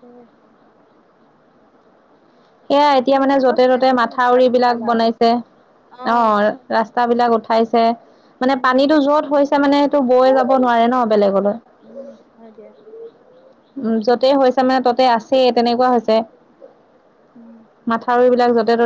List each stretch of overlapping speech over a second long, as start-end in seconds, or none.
3.0-5.0